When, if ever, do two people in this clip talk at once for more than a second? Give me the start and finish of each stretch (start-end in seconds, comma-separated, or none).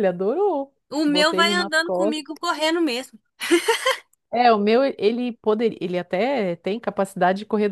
0.9-2.4